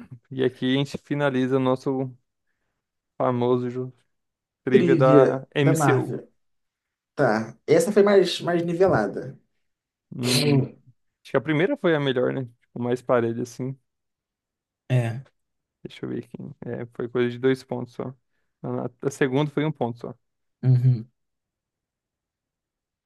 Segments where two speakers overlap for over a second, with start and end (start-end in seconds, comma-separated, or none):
4.7-6.2